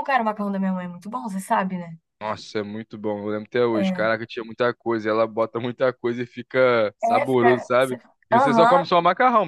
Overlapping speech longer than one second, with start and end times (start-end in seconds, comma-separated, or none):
7.0-8.9